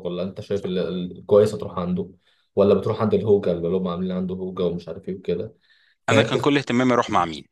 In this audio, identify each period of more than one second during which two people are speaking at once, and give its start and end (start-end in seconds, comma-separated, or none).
none